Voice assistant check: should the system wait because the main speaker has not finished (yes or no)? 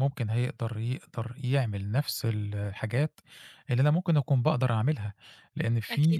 yes